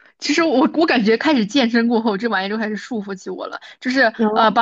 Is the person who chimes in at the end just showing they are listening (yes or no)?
yes